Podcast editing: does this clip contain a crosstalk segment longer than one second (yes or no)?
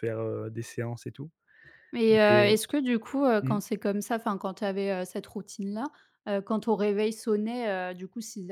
no